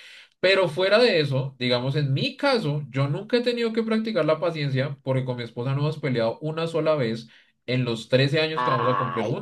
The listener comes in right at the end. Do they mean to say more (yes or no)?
yes